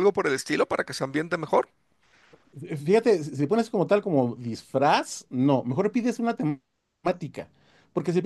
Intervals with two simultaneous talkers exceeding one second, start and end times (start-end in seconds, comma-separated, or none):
none